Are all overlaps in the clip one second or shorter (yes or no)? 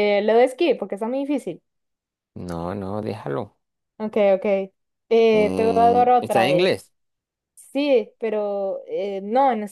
no